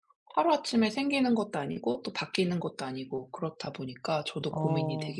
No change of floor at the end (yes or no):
no